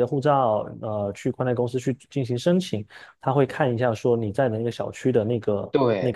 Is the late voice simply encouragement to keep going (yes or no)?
yes